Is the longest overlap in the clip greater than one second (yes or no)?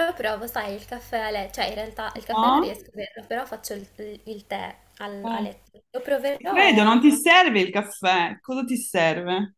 yes